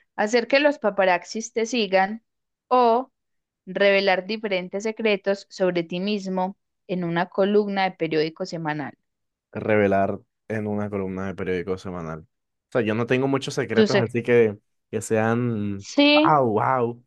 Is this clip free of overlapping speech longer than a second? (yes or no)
yes